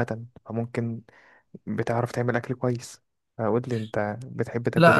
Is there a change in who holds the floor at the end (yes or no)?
yes